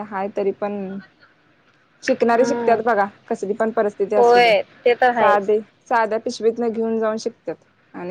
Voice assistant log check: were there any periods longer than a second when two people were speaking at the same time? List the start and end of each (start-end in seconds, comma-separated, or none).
none